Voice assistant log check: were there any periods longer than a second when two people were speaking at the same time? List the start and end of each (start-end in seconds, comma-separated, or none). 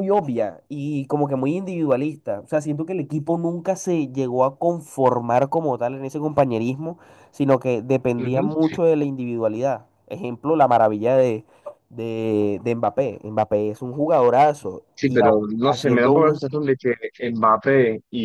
14.9-16.4